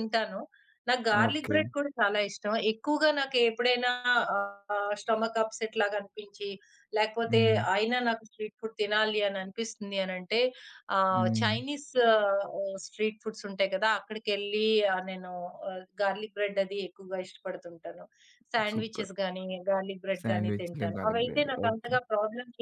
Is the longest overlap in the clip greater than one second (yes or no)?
yes